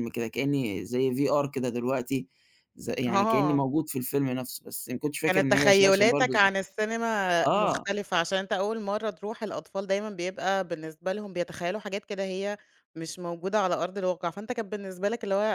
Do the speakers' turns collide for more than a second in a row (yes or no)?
yes